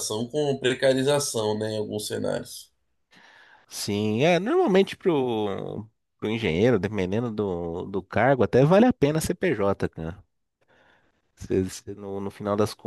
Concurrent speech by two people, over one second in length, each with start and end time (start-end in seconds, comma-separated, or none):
none